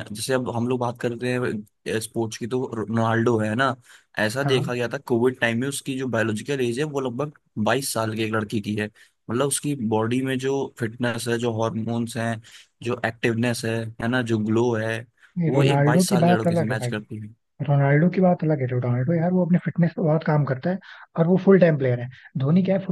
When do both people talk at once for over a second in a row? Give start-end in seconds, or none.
15.5-16.9